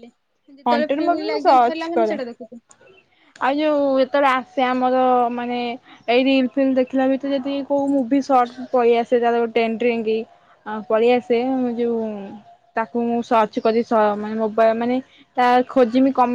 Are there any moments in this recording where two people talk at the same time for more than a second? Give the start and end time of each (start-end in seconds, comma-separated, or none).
0.7-2.2